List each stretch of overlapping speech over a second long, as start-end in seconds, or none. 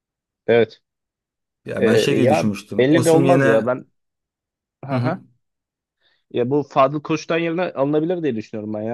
1.8-3.6